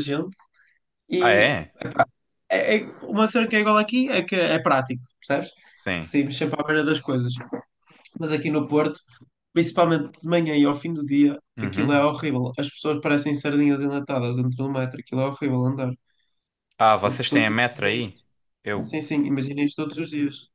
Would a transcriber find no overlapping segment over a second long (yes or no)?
no